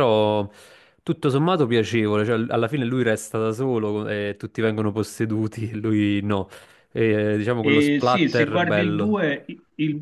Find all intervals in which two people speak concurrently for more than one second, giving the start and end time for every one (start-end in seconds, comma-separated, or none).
7.6-9.2